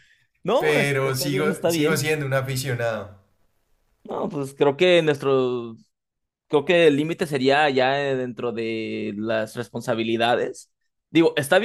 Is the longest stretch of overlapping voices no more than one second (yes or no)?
no